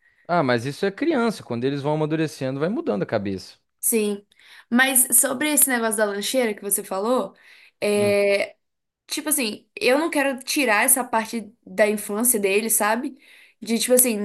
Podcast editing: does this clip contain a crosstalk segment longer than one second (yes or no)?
no